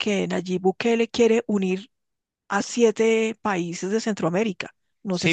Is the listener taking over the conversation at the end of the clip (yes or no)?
yes